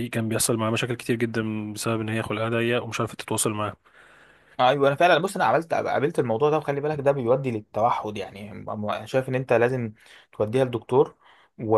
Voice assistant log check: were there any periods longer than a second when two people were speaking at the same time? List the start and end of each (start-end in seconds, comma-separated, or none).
none